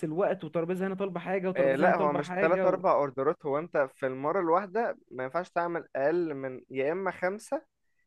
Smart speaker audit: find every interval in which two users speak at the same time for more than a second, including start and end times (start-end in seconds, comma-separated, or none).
1.6-2.8